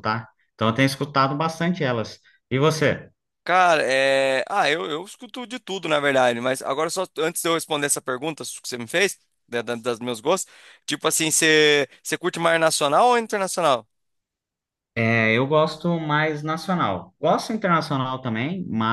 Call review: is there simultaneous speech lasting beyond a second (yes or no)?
no